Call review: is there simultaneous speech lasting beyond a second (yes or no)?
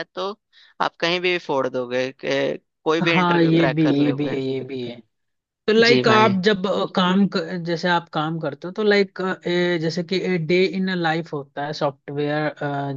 yes